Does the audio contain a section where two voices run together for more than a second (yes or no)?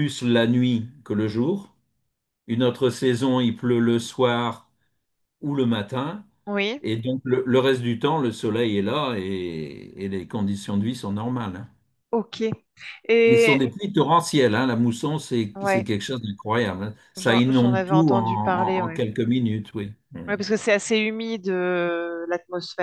yes